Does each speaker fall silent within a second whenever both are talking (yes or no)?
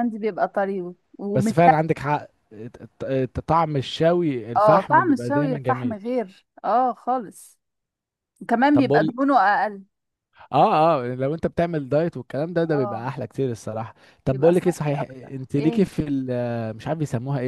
no